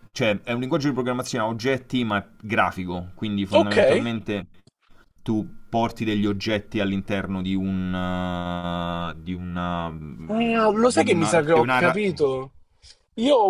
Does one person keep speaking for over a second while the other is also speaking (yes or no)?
yes